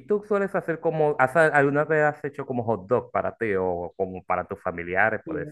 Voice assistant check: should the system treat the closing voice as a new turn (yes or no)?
yes